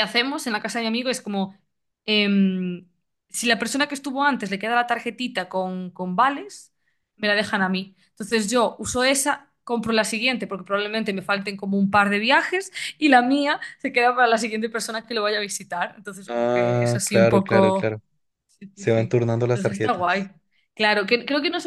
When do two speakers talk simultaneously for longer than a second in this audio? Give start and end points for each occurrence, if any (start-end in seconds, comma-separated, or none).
16.3-18.0, 18.7-20.2